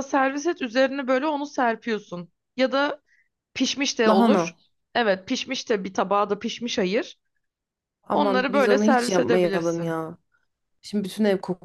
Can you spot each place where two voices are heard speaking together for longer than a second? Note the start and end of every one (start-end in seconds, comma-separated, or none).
8.1-9.9